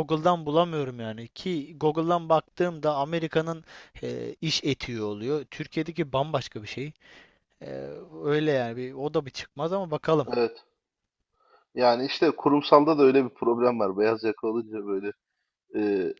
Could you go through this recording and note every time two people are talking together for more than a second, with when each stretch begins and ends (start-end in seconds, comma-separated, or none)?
none